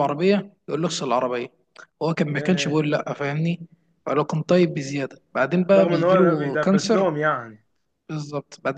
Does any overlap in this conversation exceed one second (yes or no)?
yes